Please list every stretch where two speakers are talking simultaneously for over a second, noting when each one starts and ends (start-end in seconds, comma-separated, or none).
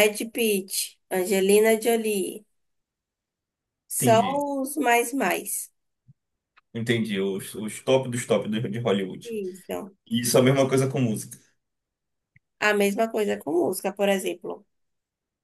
none